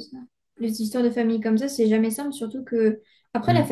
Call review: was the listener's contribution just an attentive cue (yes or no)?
yes